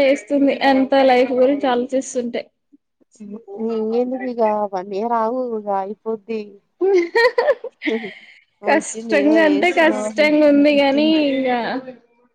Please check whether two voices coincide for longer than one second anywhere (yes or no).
yes